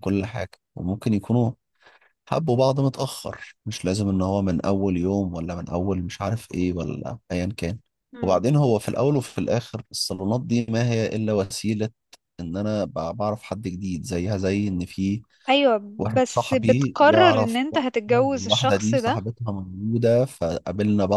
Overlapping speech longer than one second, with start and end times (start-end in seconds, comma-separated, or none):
16.1-19.2